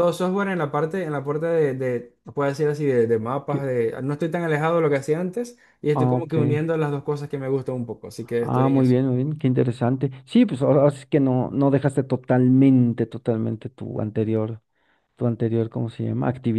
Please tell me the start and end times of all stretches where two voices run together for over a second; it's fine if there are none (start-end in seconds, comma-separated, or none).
none